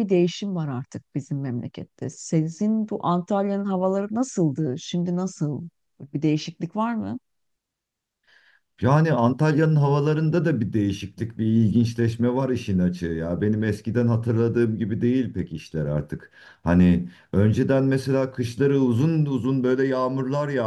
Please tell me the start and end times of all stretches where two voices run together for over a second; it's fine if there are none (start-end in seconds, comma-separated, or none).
none